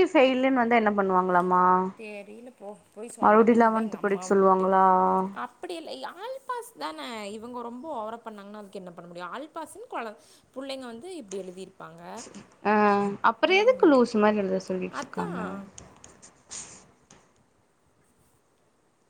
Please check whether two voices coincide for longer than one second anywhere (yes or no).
yes